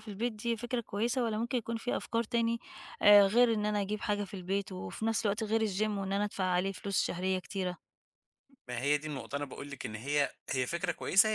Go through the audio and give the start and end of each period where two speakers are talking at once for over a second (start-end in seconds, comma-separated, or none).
none